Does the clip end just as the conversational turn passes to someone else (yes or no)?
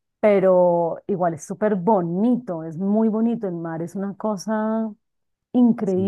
yes